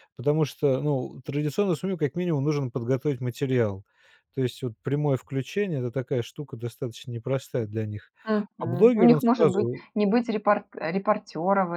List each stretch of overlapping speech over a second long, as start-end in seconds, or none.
8.6-9.8